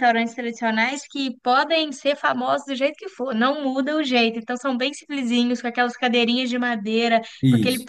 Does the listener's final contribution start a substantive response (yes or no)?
no